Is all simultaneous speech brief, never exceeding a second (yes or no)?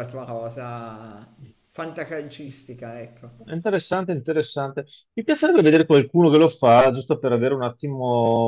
yes